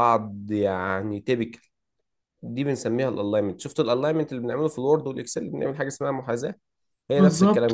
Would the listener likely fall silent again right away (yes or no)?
no